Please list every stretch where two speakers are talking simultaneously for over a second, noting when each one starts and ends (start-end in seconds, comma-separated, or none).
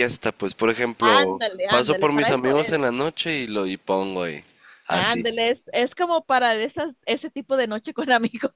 1.0-2.8